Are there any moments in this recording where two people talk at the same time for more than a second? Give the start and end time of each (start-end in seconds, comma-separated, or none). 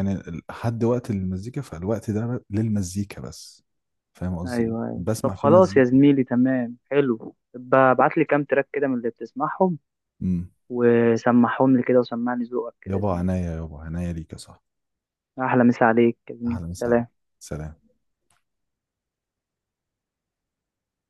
4.5-5.9